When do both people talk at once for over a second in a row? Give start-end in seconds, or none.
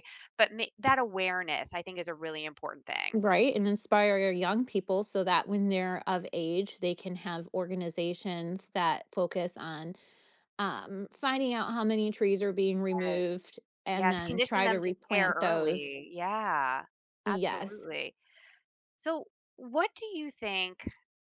13.9-16.0